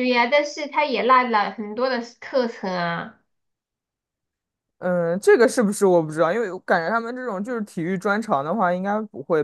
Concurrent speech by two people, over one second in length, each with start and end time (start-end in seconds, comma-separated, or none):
none